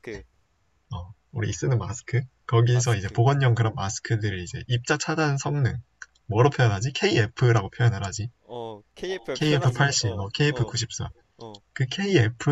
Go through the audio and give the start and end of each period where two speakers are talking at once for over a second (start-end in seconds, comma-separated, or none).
9.3-10.8